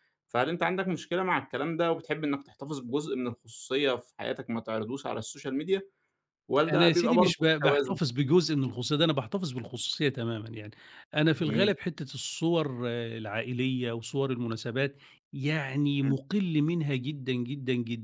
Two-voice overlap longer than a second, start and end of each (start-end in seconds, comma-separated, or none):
6.7-8.0